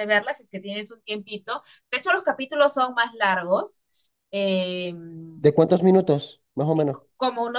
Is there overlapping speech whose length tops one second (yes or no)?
no